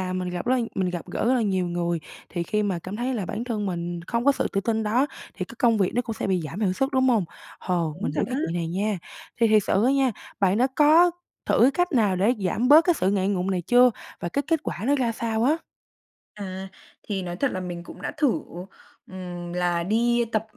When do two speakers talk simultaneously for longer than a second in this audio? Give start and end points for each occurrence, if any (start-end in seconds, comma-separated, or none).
none